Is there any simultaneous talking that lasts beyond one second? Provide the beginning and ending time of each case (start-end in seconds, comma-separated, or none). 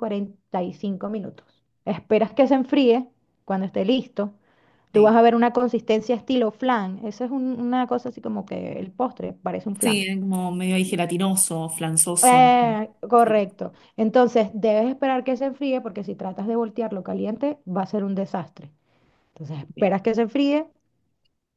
none